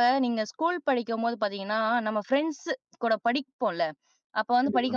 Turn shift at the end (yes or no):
no